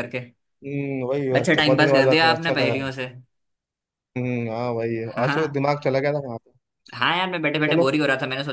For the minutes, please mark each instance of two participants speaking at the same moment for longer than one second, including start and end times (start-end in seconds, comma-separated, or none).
1.4-2.7